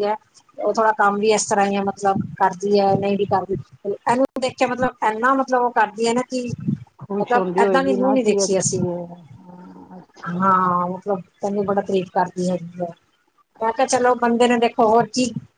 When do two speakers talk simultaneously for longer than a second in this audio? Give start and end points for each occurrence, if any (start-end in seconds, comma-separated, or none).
7.2-8.8